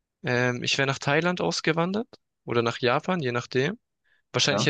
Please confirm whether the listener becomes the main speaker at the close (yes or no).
no